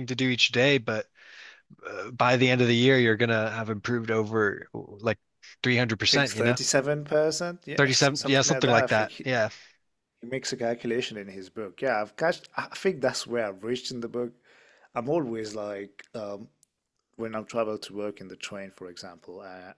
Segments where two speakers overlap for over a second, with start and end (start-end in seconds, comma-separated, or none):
7.8-9.3